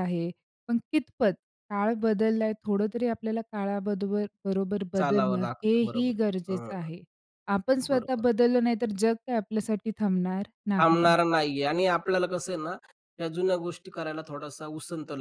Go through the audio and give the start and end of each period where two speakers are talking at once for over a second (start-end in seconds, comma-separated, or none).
5.0-6.7